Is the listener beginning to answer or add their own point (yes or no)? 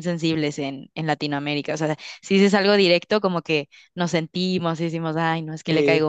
no